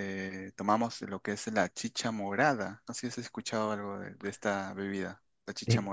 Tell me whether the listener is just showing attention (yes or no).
no